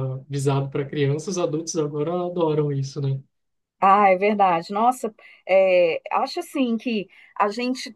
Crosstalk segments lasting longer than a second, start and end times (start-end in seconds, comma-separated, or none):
none